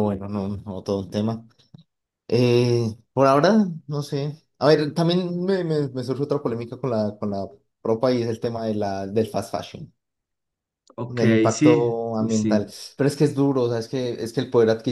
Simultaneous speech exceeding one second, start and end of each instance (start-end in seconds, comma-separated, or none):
11.1-12.7